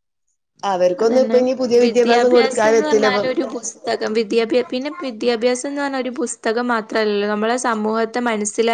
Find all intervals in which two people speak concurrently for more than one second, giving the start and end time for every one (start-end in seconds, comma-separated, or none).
none